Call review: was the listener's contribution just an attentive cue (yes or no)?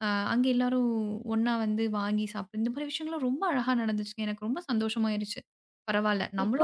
no